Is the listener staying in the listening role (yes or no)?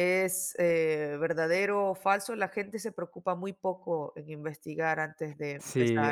no